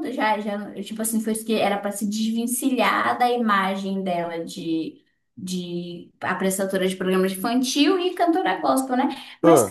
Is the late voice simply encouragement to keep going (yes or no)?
yes